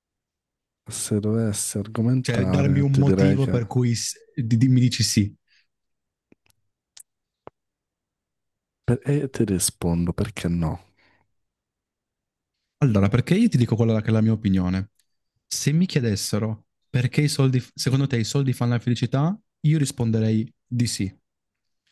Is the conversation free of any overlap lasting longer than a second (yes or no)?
no